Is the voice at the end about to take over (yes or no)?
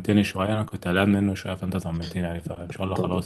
no